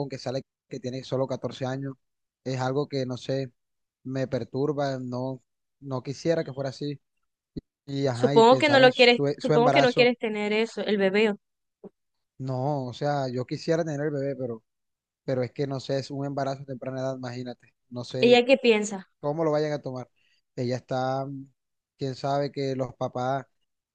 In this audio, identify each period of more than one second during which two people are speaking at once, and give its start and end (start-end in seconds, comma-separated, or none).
8.1-10.1